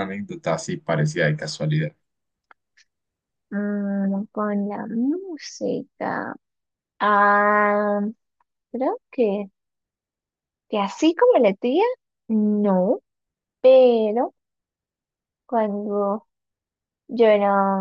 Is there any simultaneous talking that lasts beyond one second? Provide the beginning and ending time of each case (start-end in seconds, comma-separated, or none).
none